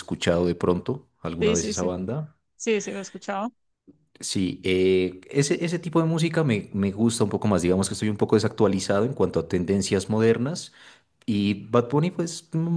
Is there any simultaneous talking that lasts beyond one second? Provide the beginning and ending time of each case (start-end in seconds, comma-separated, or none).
none